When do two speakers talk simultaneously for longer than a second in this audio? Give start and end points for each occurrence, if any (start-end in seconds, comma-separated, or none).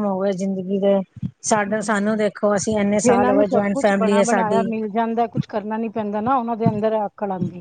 2.9-4.7